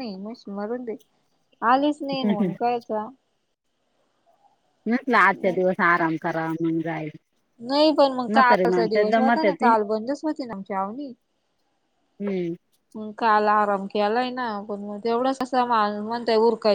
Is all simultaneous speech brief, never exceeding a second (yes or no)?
no